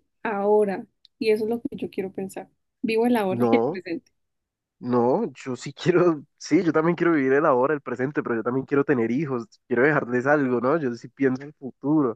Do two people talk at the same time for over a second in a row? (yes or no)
no